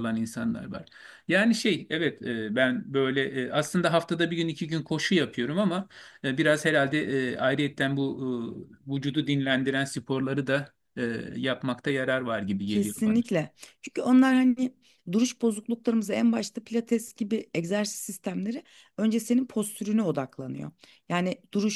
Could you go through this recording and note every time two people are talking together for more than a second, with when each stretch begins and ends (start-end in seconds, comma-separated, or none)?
none